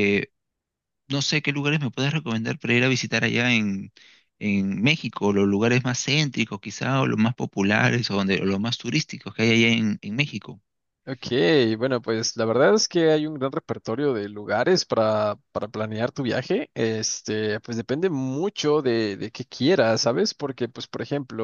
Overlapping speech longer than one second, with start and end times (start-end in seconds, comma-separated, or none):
none